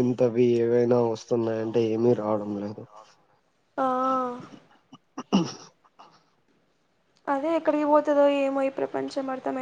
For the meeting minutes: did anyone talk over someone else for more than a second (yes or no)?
yes